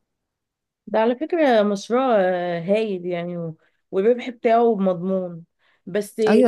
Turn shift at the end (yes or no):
yes